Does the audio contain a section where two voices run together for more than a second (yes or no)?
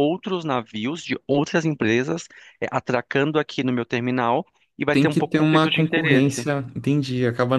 yes